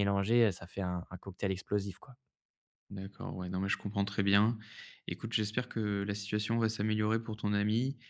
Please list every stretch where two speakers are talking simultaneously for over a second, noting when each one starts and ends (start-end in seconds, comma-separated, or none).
none